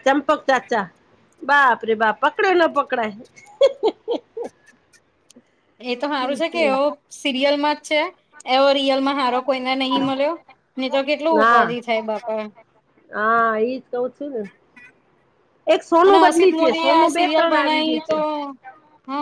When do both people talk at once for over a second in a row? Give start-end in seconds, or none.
16.1-18.2